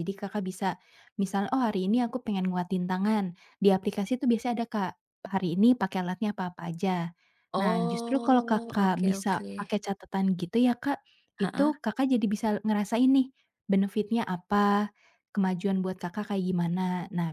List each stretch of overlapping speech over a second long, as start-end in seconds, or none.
7.6-9.5